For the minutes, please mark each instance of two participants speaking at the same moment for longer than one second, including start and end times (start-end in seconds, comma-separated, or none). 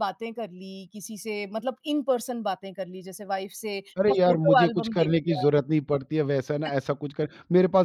4.0-5.5